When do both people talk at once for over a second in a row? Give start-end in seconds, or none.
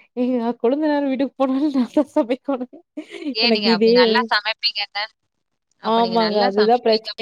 none